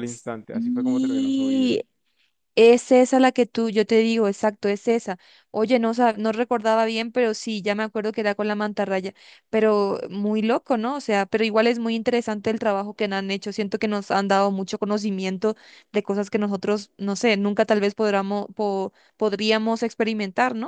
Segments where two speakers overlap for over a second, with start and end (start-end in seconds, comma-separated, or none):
0.5-1.7